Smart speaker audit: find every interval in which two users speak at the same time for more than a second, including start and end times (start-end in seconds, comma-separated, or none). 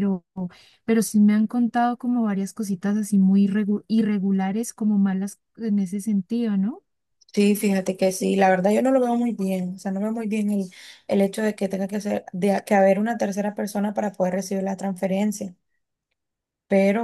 none